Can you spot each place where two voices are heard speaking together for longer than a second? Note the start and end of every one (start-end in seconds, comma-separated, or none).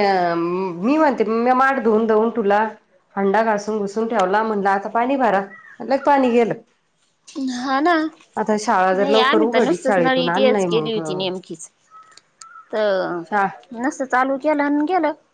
8.4-11.0